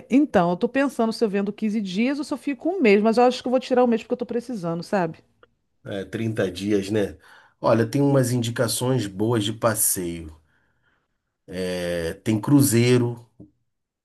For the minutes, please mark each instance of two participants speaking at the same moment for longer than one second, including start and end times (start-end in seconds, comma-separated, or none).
none